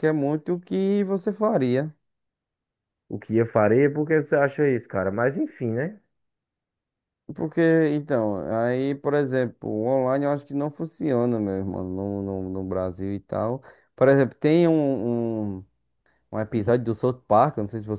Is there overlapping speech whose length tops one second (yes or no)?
no